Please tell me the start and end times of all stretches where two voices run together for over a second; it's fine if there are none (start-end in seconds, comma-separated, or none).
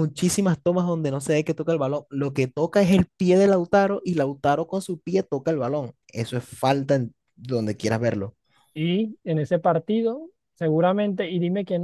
none